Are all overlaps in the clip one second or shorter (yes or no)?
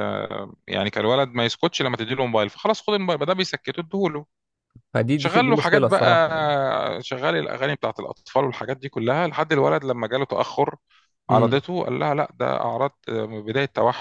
no